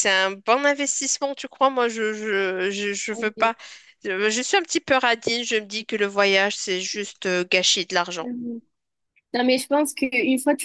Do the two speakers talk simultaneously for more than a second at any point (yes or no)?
no